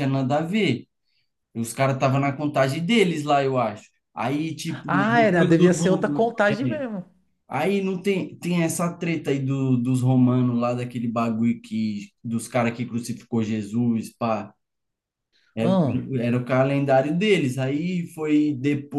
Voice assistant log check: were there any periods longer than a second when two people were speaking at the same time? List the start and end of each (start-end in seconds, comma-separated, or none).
4.9-6.8